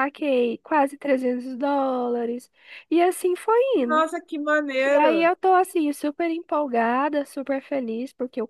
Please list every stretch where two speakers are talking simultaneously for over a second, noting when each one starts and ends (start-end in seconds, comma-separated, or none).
none